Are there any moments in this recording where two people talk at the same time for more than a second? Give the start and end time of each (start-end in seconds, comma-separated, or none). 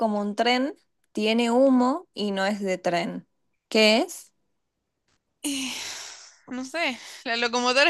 none